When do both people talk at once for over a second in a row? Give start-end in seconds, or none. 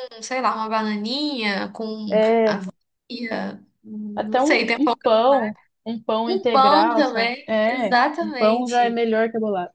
4.1-5.5, 6.3-9.0